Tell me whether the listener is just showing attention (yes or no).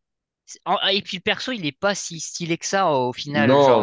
no